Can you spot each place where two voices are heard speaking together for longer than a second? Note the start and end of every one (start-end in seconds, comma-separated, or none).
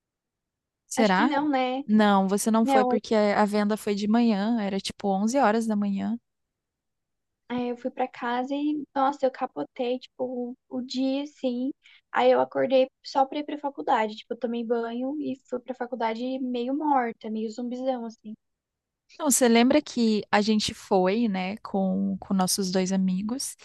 none